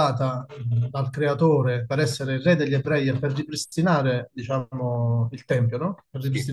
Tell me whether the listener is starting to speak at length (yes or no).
no